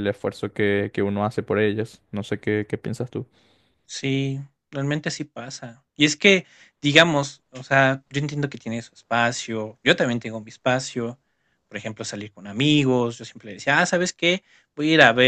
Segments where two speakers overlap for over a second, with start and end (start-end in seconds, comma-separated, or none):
none